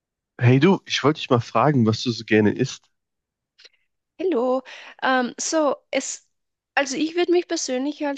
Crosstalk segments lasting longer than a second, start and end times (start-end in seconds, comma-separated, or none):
none